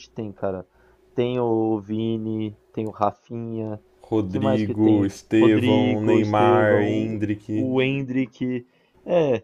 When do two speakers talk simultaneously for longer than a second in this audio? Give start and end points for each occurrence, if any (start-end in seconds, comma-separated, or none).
4.3-7.7